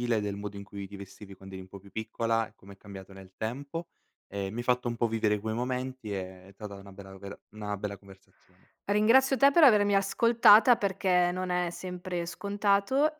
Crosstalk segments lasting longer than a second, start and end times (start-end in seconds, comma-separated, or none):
none